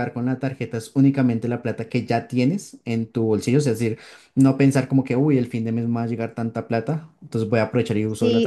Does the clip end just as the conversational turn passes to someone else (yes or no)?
yes